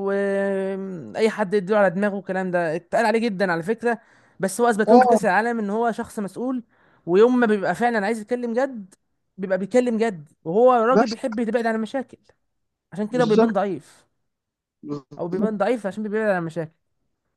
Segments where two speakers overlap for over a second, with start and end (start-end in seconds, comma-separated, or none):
none